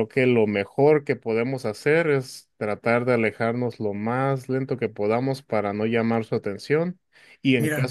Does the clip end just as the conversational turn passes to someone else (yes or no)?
no